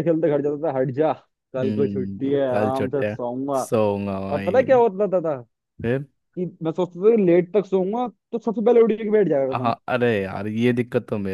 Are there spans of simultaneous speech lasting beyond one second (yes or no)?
yes